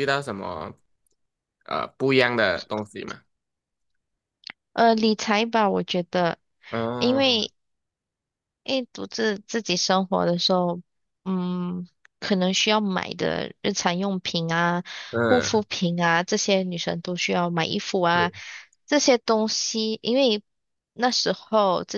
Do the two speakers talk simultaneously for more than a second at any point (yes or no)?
no